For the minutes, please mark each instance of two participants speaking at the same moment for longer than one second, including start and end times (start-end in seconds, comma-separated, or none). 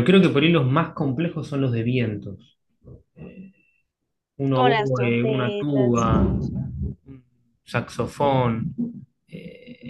4.5-6.5